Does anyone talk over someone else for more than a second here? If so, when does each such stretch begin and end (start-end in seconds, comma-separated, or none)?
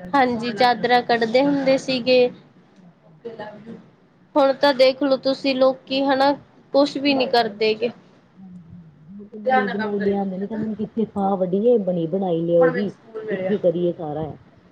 none